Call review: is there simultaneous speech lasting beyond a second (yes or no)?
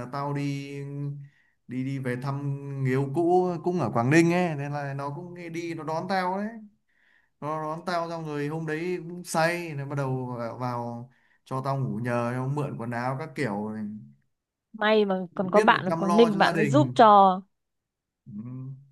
yes